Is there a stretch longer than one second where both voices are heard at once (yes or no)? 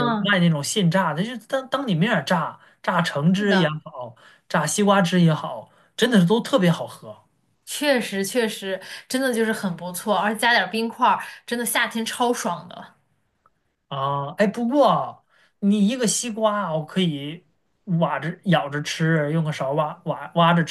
no